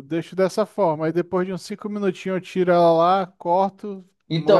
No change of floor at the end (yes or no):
no